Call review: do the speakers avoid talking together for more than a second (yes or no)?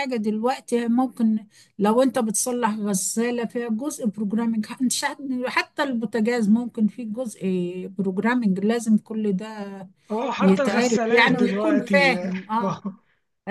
no